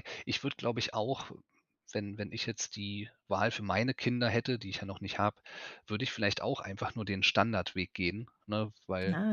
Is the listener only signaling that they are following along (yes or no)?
no